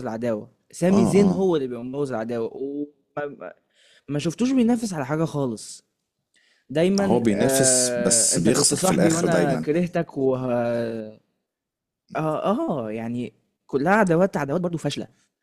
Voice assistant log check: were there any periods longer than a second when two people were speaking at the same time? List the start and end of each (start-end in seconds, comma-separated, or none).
7.0-9.7